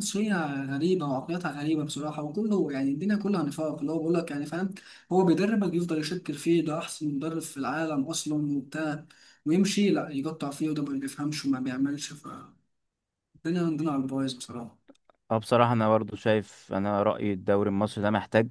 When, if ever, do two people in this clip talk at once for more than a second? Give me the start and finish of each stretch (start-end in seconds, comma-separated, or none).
none